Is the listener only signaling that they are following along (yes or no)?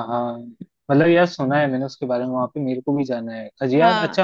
yes